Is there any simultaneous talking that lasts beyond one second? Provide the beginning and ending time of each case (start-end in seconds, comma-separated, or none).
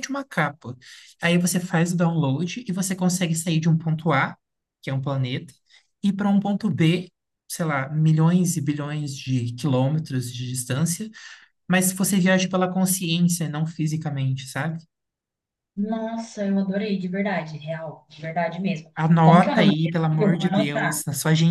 19.0-21.0